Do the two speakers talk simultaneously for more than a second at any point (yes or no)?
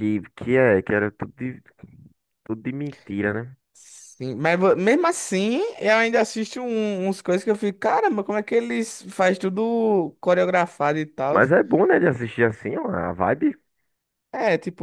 no